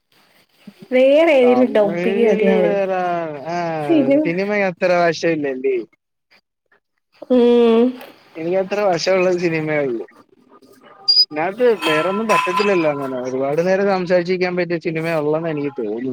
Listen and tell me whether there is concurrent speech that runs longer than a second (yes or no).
yes